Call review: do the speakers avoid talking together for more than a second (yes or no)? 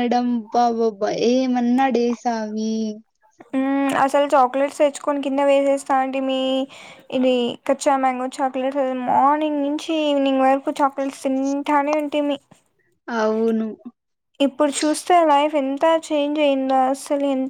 yes